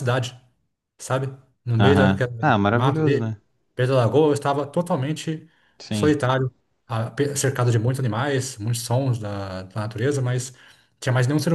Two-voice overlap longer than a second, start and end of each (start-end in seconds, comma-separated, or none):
1.8-3.4